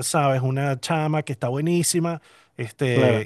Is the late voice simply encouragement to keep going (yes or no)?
yes